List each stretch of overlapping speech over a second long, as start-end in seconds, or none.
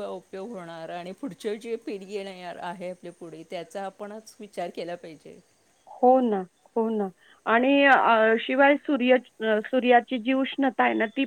none